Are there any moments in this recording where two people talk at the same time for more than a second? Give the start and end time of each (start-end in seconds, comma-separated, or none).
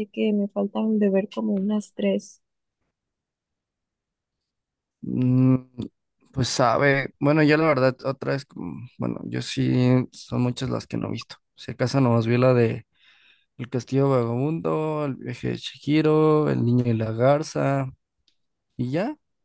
none